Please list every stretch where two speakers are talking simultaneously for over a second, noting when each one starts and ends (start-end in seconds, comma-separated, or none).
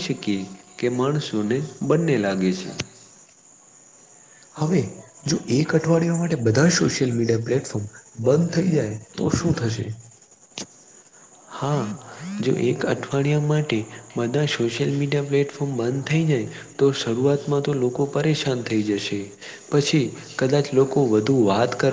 none